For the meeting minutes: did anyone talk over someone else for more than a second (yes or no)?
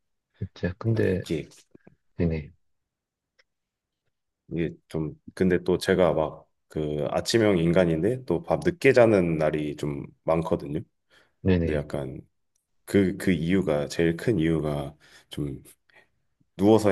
no